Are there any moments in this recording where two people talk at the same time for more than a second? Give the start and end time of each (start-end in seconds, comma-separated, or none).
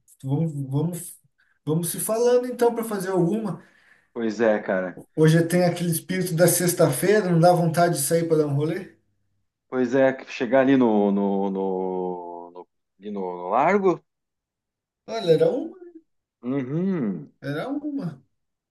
none